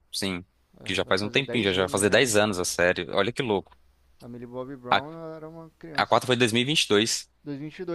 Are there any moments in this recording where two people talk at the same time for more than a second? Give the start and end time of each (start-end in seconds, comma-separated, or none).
0.8-2.3